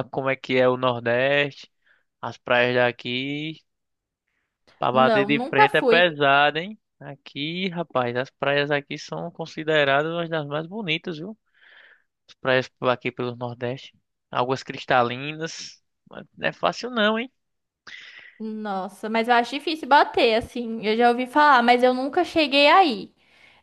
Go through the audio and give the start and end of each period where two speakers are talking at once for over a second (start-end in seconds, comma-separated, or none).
4.9-6.1